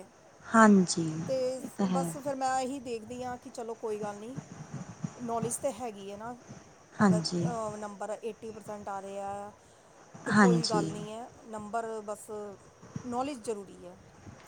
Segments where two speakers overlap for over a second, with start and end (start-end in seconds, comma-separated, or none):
none